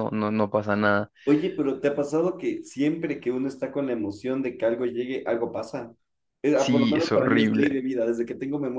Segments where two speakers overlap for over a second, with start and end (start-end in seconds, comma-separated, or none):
6.5-7.8